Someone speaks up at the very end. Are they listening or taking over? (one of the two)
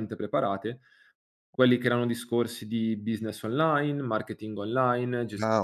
taking over